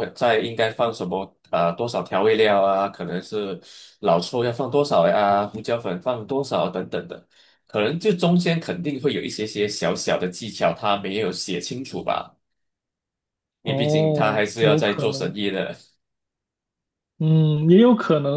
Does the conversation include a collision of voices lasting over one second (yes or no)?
yes